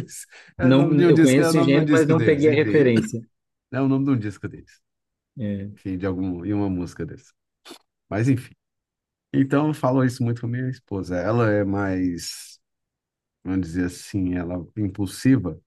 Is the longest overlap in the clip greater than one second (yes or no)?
yes